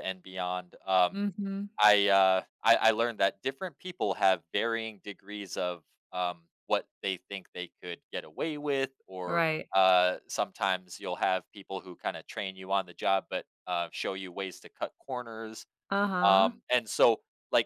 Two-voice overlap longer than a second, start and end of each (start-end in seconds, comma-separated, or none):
none